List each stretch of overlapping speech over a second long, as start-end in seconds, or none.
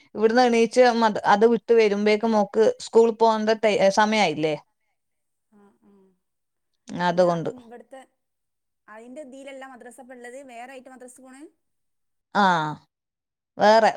none